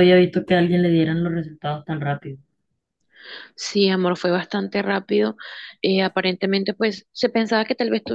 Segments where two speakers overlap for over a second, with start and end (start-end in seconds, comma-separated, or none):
none